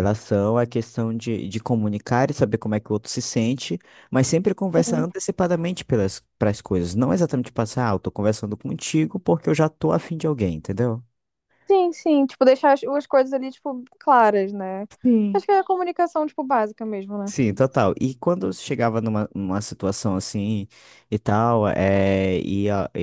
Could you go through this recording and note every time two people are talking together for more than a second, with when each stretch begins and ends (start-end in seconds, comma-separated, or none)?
none